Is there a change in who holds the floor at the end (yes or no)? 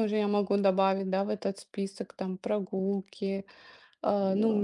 no